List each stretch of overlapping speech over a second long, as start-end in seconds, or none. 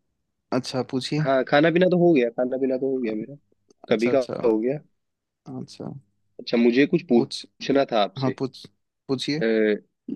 none